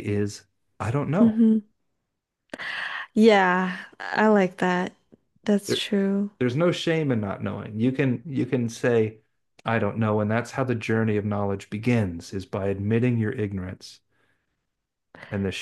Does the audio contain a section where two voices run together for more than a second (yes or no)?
no